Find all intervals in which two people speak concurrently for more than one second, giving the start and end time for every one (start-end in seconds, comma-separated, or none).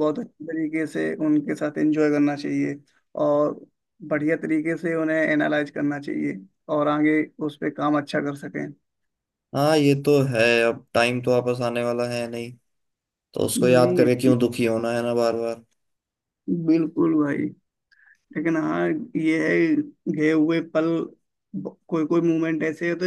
none